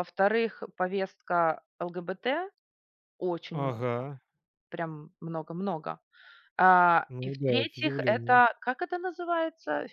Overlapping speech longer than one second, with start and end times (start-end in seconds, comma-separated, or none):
7.1-8.4